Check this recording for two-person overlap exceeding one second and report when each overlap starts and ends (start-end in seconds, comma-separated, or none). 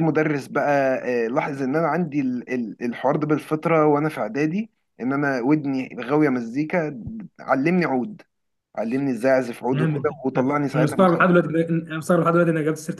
9.7-11.5